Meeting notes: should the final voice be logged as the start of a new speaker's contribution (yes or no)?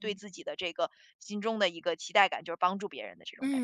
yes